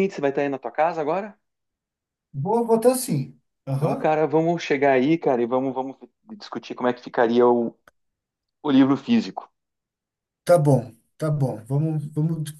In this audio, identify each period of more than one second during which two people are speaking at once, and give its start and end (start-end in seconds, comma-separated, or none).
none